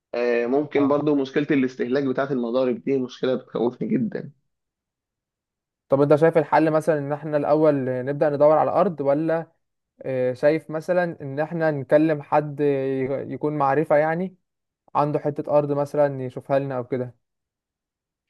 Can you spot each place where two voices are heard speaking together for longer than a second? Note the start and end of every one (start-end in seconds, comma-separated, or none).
none